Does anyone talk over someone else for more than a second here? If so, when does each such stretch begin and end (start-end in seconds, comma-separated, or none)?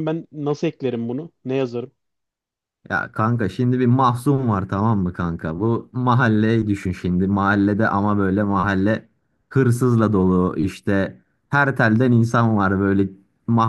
none